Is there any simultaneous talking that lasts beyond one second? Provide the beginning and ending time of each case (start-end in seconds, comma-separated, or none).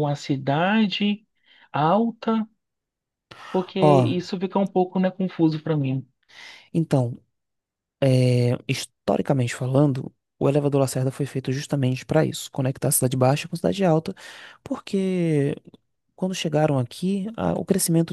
none